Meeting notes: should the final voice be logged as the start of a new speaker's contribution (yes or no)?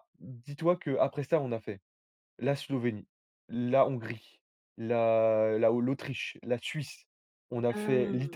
no